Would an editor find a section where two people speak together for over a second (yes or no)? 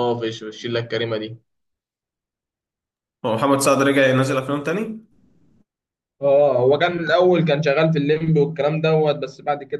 no